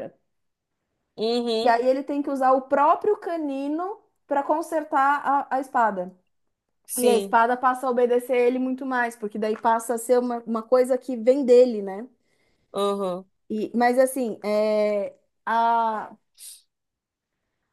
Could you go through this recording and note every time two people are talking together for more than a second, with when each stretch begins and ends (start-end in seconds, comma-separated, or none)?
none